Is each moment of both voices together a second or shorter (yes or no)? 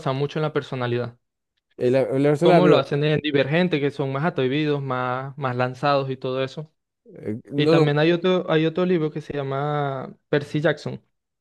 yes